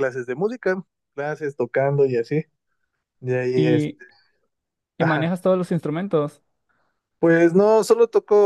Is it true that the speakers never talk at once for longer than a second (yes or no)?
yes